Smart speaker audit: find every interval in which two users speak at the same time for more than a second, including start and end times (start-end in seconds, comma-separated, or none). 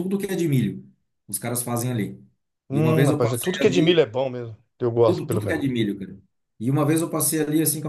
2.7-4.0